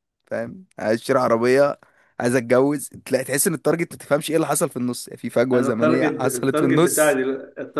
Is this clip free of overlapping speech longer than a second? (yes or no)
no